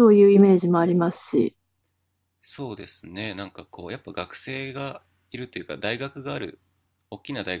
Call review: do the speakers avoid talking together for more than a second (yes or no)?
yes